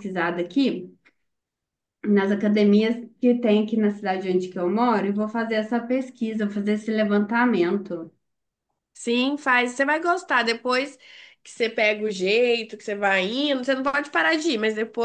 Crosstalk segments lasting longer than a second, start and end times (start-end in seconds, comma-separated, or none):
none